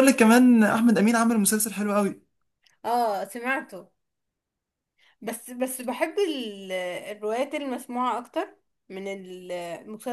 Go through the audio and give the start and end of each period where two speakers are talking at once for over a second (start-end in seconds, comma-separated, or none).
none